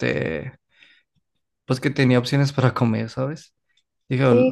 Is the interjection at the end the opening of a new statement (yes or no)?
yes